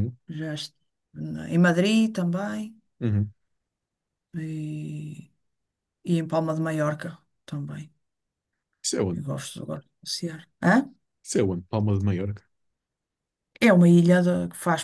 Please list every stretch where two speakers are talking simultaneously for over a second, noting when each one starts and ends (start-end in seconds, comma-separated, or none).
none